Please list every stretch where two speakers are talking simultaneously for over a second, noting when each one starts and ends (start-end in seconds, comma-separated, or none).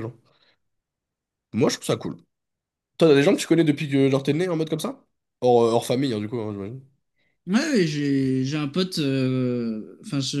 none